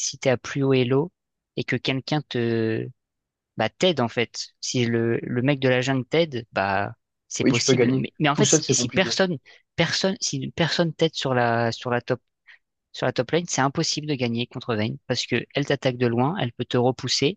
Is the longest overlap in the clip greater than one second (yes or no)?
yes